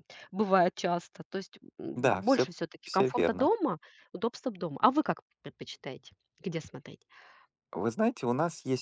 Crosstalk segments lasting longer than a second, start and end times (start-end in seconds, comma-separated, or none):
1.9-3.5